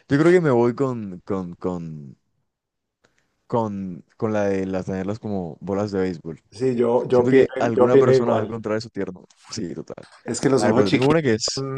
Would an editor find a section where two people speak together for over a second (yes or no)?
yes